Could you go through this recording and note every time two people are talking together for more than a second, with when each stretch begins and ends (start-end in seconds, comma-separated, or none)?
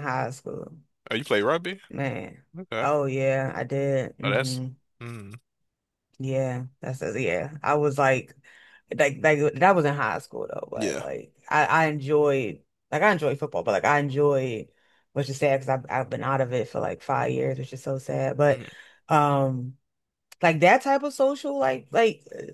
none